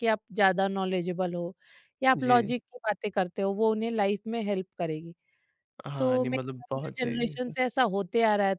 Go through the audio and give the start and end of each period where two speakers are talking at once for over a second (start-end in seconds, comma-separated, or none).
6.0-7.5